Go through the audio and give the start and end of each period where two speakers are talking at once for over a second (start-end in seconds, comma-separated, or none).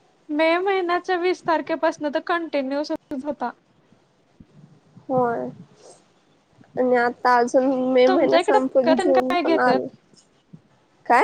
8.1-9.9